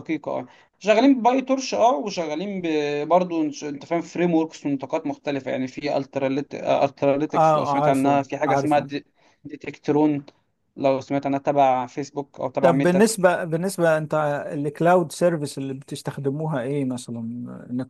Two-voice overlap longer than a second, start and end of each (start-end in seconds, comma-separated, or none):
7.3-8.9